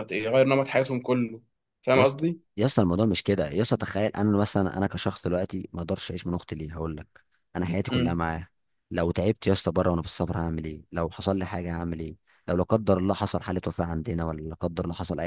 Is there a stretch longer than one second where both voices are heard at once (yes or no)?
no